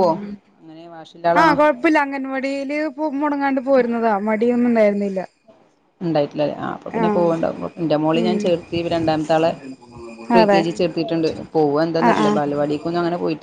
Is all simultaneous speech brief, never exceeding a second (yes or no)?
yes